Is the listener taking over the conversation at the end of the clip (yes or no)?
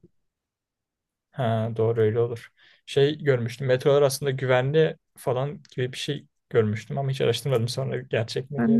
yes